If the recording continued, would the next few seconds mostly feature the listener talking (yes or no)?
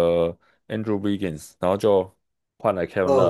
yes